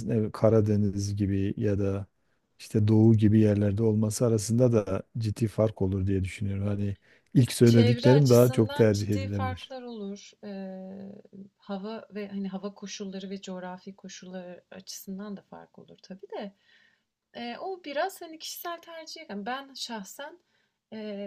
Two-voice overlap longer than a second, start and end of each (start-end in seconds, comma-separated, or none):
7.6-9.7